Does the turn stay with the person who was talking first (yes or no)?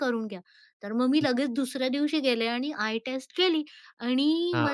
yes